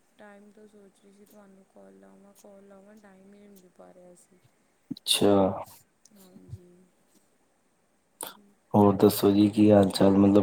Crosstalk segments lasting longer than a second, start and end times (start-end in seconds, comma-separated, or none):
none